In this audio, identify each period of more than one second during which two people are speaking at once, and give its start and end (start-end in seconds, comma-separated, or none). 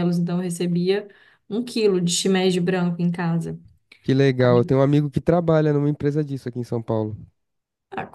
none